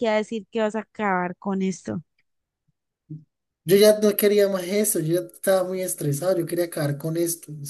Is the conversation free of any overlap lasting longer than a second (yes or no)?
yes